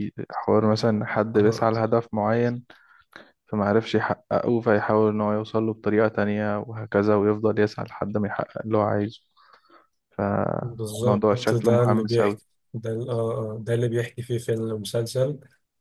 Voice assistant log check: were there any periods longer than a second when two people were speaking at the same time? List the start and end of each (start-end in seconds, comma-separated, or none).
10.6-12.4